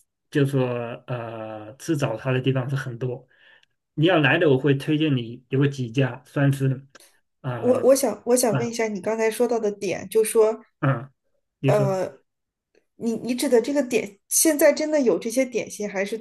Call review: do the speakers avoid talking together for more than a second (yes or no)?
yes